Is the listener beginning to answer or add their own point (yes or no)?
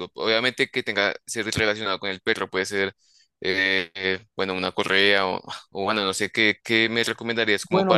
yes